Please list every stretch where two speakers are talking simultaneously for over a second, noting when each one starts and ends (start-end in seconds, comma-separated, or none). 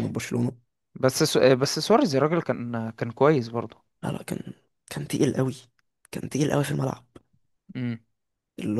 none